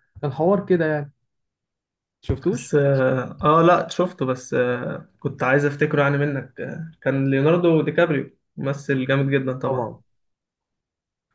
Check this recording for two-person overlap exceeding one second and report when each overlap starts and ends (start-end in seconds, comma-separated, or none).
none